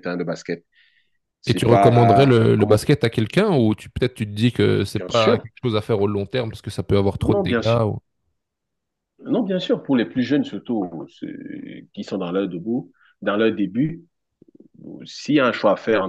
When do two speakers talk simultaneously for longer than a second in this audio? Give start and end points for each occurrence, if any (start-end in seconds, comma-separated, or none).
1.5-2.8